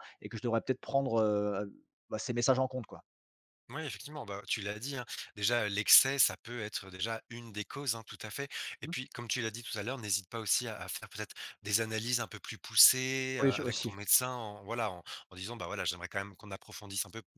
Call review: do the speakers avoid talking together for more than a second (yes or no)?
yes